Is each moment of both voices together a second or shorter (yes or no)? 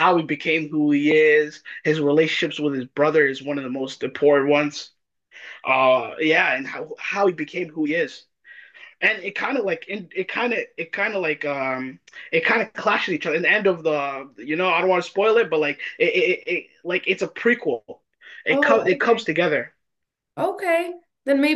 yes